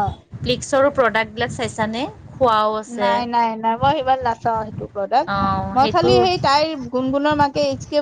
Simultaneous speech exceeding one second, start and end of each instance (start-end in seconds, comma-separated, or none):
none